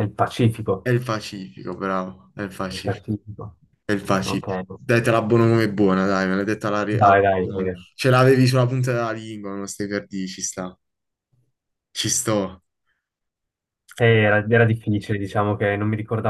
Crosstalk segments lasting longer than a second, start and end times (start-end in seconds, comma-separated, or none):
none